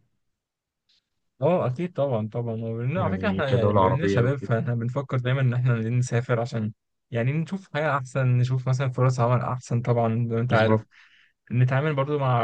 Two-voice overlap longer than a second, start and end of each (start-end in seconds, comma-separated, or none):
3.0-4.6